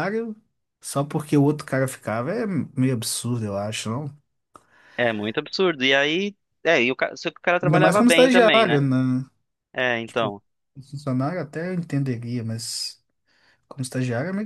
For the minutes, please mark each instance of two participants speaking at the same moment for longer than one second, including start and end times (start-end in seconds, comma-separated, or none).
7.6-8.8